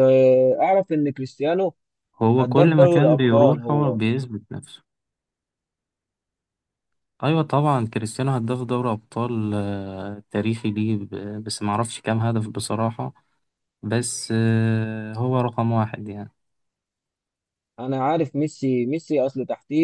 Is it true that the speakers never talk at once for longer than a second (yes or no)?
no